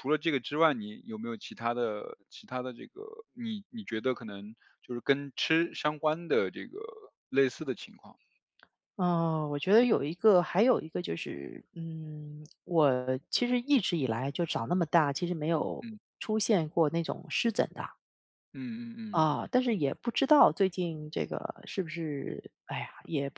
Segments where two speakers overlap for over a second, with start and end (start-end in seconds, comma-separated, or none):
none